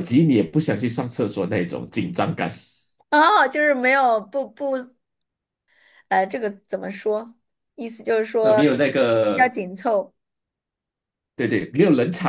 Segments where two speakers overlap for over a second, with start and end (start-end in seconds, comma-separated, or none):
none